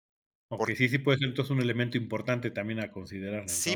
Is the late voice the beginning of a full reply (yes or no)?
yes